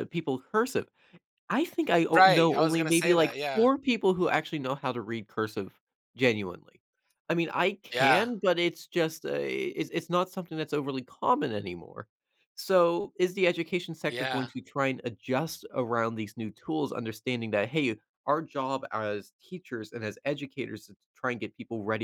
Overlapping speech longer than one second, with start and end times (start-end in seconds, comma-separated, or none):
2.1-3.7